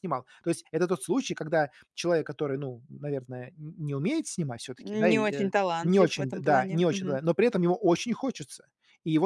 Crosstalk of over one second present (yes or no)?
yes